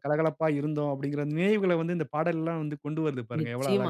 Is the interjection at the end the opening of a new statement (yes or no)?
yes